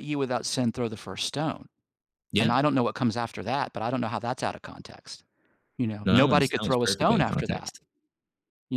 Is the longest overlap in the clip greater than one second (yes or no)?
yes